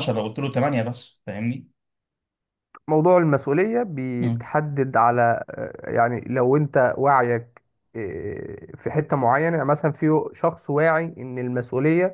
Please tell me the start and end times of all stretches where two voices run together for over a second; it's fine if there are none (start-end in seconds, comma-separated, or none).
none